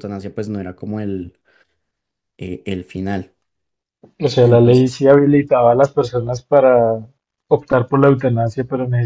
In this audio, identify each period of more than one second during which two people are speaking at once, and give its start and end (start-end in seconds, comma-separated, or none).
none